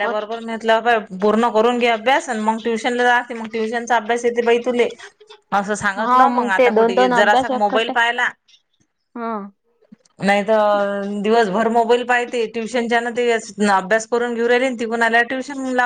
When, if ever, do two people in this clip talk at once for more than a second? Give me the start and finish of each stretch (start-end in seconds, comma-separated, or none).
6.0-7.9